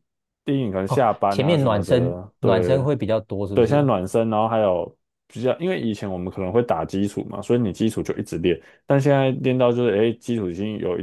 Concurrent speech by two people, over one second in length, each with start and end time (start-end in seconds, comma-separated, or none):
0.8-2.8